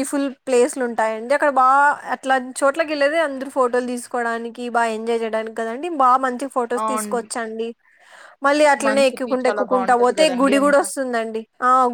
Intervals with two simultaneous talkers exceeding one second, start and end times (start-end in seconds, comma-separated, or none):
8.8-10.8